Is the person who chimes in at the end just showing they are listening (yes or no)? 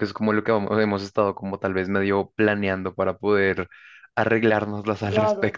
no